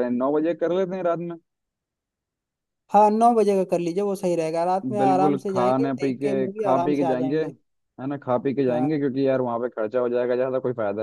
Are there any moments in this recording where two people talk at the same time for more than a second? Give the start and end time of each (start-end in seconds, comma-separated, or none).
5.0-7.4